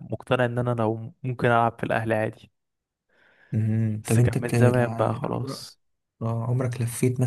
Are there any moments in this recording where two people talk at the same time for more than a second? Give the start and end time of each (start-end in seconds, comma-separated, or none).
4.0-5.5